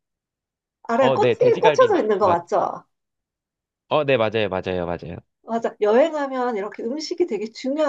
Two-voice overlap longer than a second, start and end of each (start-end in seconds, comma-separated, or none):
1.0-2.4